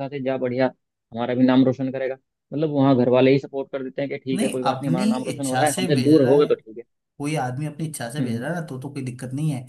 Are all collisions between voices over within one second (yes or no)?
no